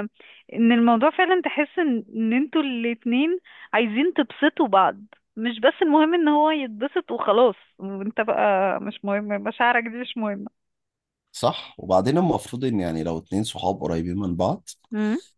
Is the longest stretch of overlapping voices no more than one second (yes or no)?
yes